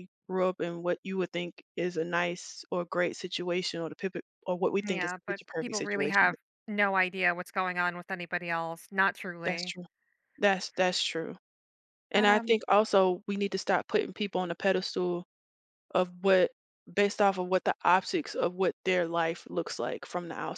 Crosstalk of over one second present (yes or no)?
yes